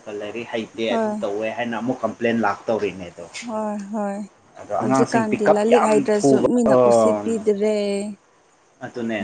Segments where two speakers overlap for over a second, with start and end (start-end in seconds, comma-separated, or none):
4.8-6.5